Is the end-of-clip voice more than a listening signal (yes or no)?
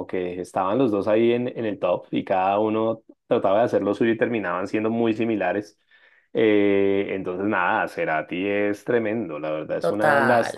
no